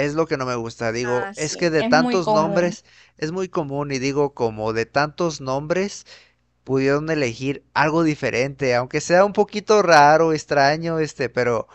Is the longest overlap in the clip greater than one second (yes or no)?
yes